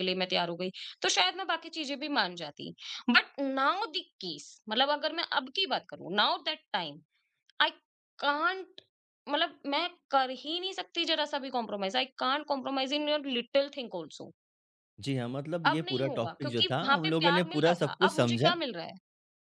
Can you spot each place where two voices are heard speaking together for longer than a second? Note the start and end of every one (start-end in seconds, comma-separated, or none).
15.7-18.6